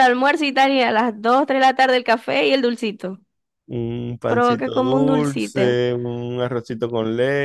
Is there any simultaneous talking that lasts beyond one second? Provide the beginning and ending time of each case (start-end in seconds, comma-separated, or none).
4.3-5.8